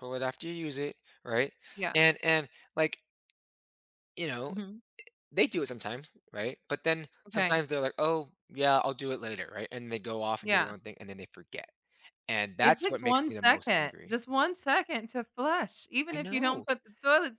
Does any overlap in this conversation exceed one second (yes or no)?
yes